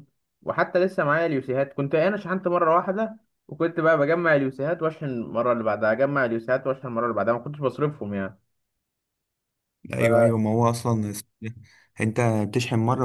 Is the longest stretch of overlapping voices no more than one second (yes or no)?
yes